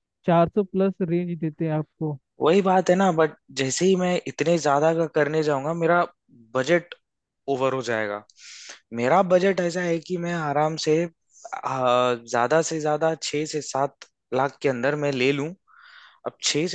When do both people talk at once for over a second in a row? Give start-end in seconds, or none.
none